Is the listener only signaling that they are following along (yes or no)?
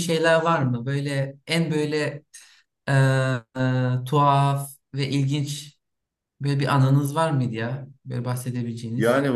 no